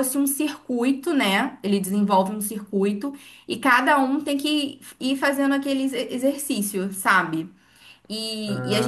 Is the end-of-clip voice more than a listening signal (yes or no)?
yes